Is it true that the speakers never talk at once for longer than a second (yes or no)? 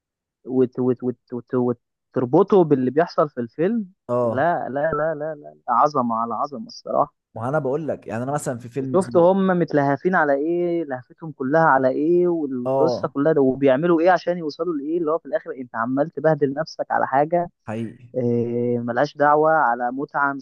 yes